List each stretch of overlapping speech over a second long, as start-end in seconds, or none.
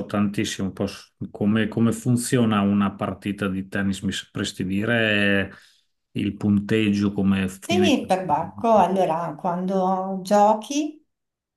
none